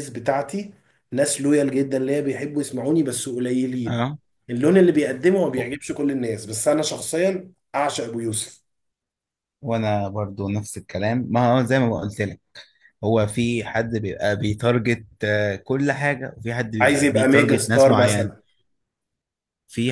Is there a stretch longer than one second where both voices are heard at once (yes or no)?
yes